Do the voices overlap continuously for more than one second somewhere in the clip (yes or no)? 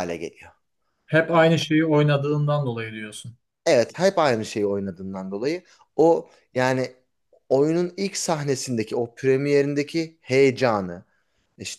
no